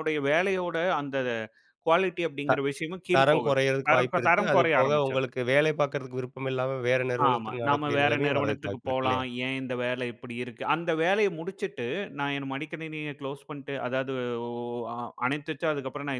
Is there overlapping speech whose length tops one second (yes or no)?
yes